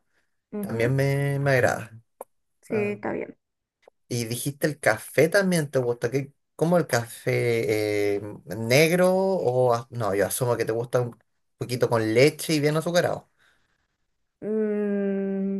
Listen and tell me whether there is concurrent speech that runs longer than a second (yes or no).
no